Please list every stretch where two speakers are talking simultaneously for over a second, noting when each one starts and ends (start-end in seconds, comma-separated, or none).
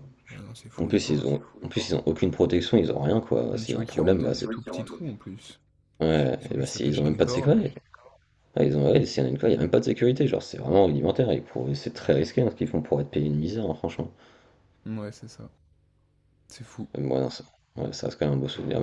3.5-5.3, 6.4-7.7